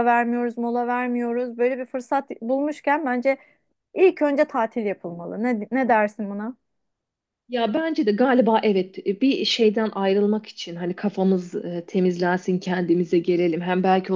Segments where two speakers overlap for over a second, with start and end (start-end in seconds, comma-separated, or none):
none